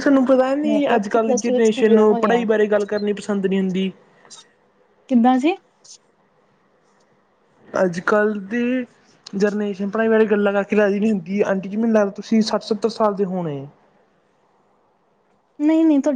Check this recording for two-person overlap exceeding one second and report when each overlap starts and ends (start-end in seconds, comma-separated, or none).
0.7-2.4